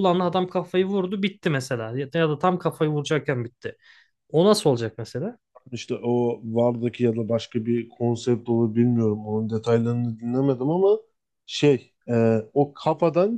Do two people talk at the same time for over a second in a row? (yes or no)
no